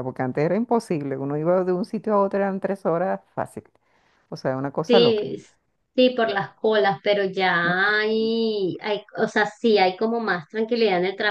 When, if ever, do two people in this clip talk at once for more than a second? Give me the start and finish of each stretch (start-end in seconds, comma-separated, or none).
none